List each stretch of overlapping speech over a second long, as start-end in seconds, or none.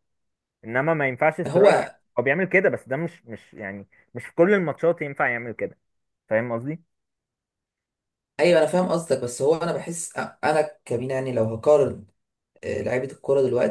none